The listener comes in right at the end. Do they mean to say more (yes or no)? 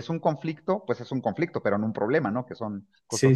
yes